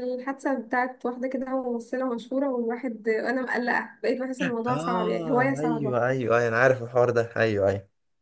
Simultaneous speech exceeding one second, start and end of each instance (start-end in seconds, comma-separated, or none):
4.7-6.0